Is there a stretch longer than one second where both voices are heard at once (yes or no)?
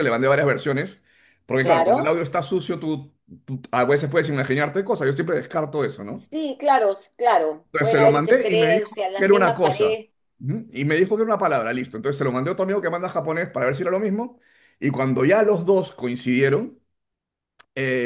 yes